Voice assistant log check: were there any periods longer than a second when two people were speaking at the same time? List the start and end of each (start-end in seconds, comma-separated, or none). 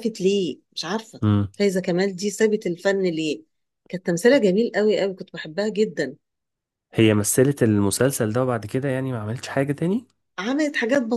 none